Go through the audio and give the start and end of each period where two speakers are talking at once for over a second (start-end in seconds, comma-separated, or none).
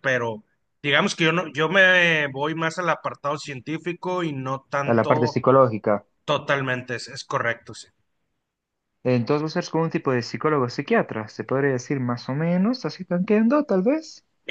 none